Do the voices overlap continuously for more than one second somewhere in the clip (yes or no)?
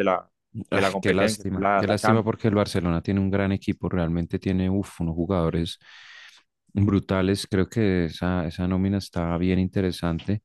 yes